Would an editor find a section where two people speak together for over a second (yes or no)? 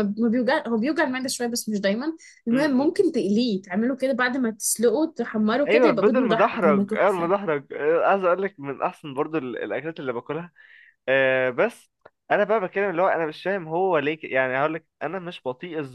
yes